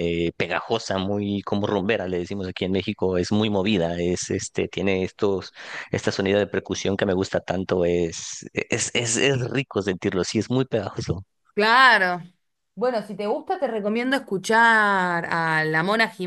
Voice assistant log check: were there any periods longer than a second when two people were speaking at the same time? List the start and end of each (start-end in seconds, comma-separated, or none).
none